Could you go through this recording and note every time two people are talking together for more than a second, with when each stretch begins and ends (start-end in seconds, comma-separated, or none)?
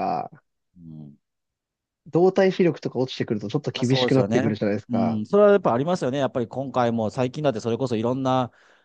3.7-5.2